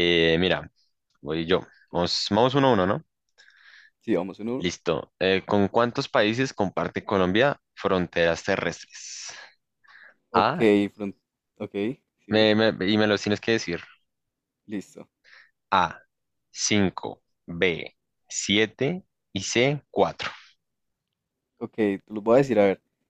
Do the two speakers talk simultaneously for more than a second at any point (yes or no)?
no